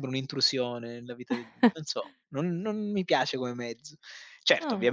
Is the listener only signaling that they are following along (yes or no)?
yes